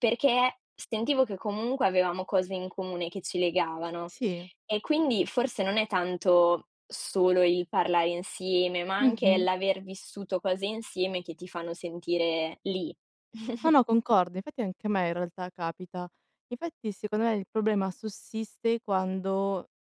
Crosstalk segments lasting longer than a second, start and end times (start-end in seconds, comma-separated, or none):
none